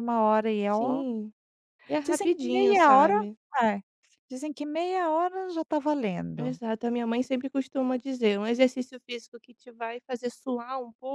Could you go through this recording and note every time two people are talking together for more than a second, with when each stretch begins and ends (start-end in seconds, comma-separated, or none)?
2.0-3.2